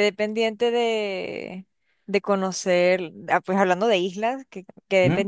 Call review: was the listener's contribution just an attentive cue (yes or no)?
yes